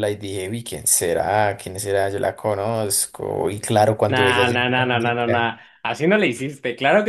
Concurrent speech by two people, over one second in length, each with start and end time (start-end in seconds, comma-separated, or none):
4.1-5.5